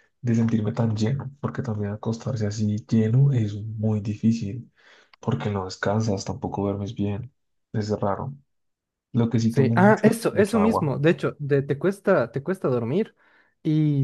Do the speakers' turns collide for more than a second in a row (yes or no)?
yes